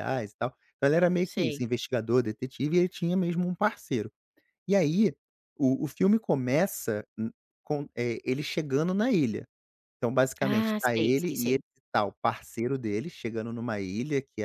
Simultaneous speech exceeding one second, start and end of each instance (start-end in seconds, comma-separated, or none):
10.4-11.6